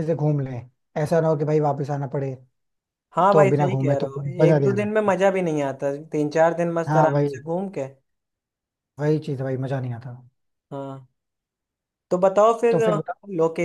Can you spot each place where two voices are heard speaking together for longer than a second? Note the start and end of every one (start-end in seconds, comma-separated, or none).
3.3-5.1